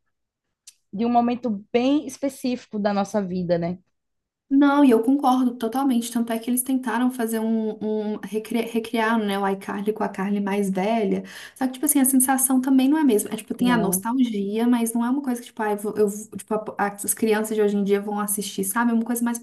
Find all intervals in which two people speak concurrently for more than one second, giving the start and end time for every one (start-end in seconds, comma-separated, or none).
none